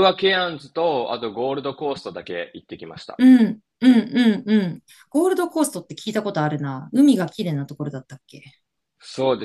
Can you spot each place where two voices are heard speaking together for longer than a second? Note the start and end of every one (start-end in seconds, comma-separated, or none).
none